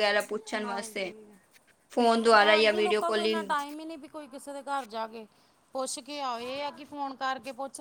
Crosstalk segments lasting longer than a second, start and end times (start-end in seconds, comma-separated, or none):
2.3-3.5